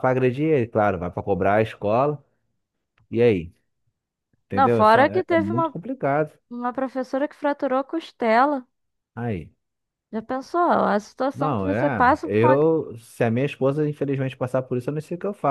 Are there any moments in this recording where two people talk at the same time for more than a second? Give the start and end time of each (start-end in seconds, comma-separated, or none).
4.5-5.7, 11.3-12.6